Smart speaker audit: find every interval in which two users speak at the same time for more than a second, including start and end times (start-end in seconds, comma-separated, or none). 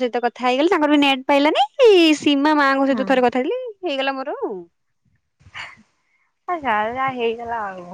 none